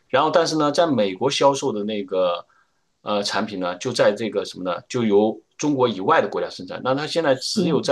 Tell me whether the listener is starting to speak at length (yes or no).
no